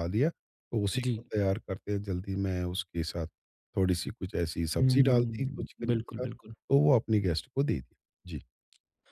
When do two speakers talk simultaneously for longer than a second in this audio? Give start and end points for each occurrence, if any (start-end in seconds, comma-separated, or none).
4.8-6.5